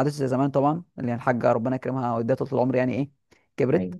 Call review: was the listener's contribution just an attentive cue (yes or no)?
yes